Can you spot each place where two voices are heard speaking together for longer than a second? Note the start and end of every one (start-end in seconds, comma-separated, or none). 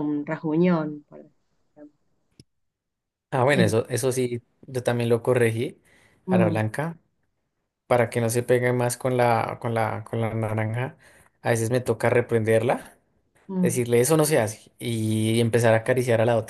none